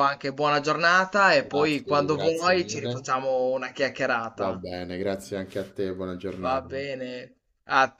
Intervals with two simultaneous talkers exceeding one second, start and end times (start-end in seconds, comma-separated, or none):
1.4-3.0